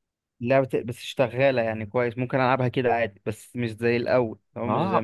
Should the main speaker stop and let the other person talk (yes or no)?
yes